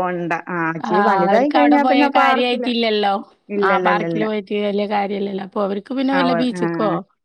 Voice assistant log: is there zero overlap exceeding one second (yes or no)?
no